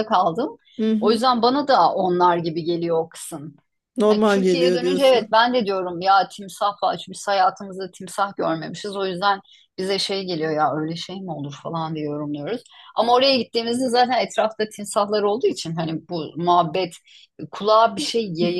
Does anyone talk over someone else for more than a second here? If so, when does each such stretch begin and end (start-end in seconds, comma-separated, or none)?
4.1-5.4